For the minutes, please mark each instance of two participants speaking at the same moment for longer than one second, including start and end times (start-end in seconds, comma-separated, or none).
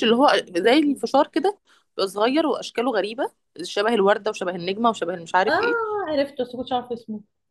none